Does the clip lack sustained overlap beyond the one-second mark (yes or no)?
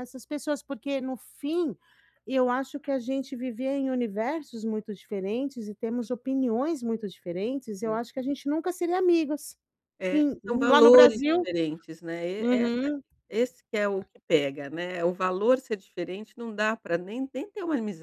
no